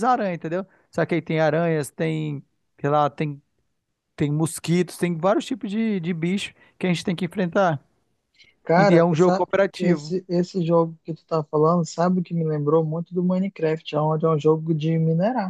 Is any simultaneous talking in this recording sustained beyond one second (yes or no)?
yes